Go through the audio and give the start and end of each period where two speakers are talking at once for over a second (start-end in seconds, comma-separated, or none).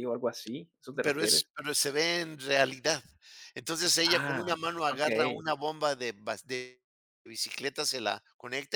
4.0-5.5